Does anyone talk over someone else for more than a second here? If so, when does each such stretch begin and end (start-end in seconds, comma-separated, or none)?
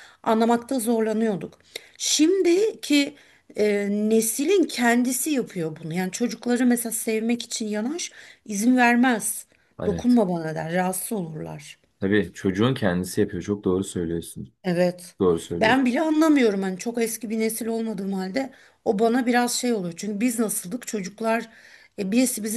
none